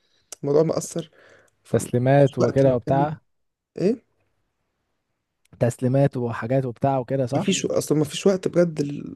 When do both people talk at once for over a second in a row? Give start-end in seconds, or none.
1.7-3.1